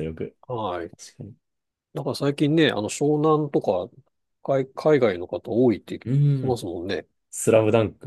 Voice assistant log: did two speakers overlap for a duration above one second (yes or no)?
no